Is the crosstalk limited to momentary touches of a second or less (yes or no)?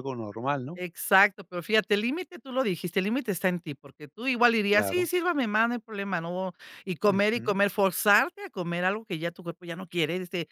yes